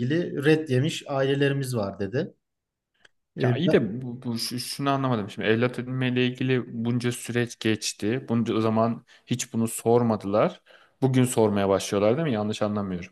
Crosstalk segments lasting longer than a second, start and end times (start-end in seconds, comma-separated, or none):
none